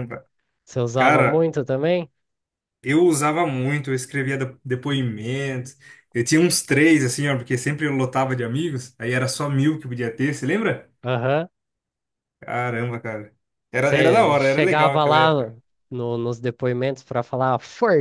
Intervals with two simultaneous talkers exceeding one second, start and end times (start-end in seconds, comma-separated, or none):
13.8-15.5